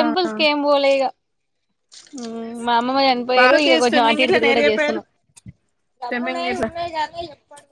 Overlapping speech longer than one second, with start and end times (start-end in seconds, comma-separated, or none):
3.4-5.0